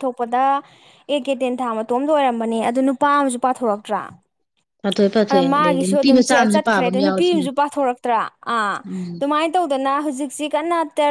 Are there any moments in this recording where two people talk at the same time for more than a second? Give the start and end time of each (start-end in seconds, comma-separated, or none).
5.3-7.5